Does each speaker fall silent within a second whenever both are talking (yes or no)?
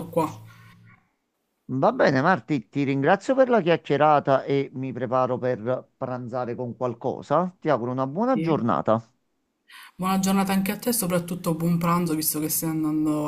yes